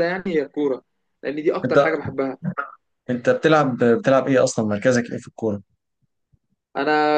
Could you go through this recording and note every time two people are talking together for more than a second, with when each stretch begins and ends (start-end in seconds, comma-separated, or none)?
none